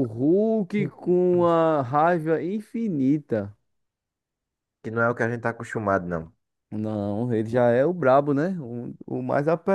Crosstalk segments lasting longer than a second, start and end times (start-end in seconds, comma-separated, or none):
none